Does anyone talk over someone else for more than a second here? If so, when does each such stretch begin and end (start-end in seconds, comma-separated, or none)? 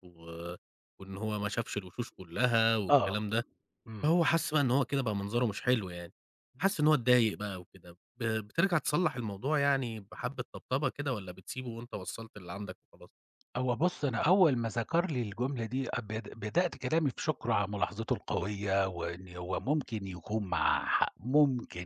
none